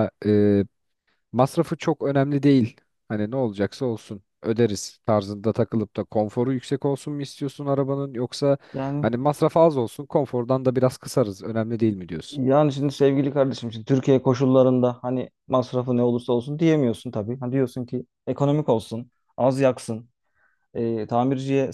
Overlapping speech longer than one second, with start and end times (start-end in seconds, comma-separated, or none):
none